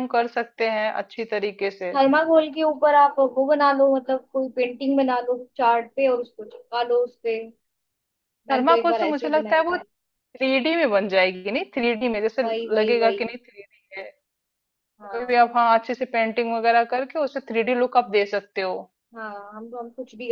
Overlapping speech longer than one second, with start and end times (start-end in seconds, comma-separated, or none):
8.5-9.8